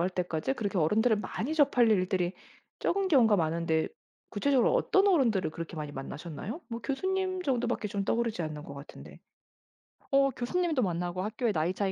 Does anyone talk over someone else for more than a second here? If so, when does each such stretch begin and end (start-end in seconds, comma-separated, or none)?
none